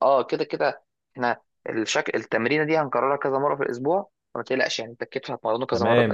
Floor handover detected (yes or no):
yes